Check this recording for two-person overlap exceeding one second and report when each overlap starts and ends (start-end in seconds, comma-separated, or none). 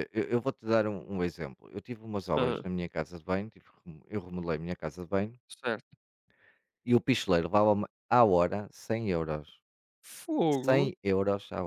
none